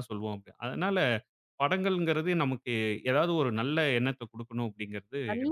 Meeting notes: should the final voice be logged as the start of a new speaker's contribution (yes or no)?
yes